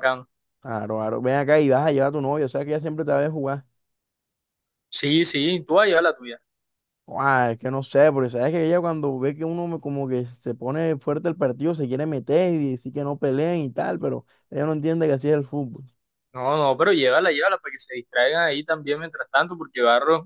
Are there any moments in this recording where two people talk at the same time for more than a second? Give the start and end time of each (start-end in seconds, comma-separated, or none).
none